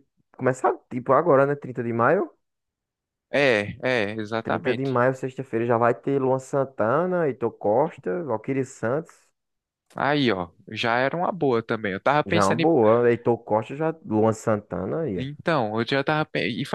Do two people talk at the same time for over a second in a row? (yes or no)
no